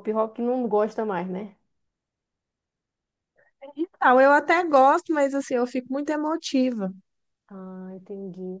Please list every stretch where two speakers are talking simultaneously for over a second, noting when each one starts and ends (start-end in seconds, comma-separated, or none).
none